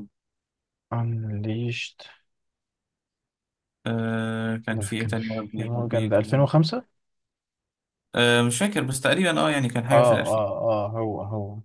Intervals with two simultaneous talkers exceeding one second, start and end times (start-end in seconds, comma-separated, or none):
4.7-6.5